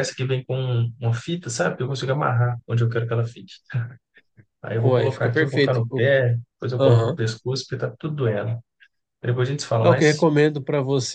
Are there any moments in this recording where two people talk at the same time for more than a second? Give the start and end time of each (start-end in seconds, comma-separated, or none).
4.8-6.1